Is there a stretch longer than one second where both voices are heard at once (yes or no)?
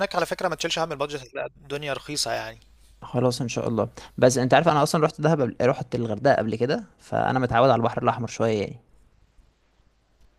no